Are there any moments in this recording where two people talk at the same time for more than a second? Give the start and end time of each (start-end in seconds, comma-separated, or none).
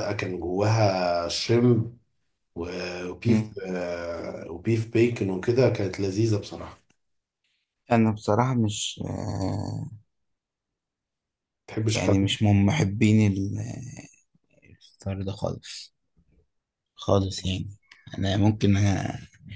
none